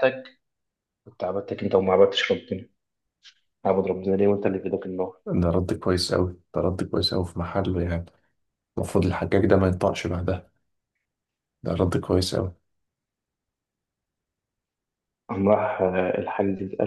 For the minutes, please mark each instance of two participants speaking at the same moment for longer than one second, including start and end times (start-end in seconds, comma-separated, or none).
none